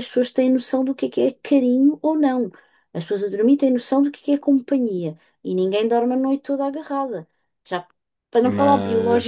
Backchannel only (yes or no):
yes